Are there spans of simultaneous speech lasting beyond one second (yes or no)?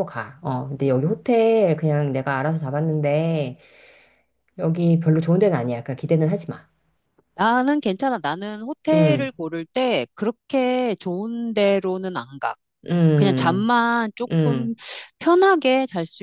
no